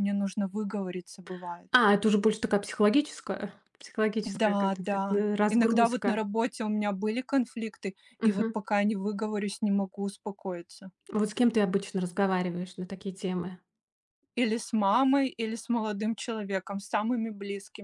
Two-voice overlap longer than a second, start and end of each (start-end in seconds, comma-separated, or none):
4.2-6.2